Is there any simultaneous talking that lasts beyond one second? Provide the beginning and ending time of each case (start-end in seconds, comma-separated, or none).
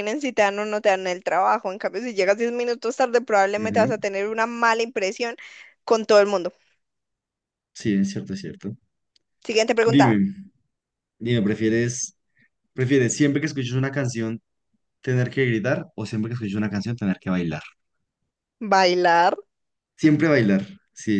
none